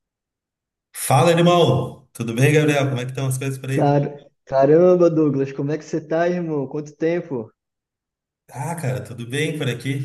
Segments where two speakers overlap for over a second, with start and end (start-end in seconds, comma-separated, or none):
none